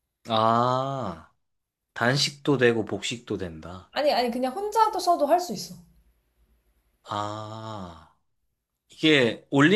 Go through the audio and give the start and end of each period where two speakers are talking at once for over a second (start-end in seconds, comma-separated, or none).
none